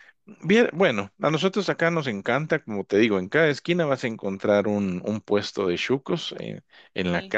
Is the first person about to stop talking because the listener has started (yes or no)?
no